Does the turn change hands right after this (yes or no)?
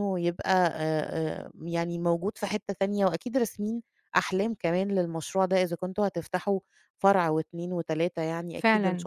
yes